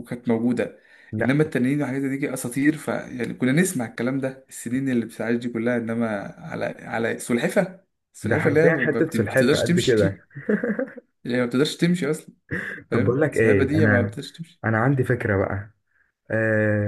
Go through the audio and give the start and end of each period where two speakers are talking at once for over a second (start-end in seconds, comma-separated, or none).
8.2-10.2, 12.9-14.2